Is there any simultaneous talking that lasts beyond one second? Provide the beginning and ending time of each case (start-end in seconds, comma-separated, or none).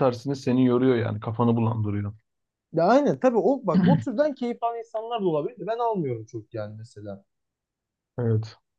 none